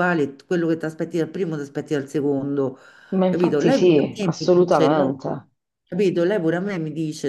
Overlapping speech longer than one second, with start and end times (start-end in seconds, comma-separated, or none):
3.3-5.1